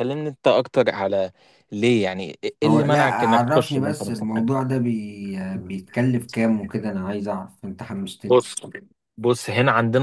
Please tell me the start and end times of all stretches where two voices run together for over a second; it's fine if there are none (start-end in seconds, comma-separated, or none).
2.6-4.3